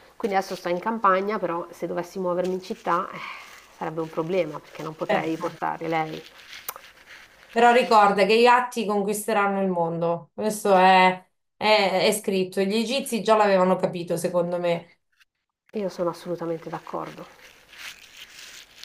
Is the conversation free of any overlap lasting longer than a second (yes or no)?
yes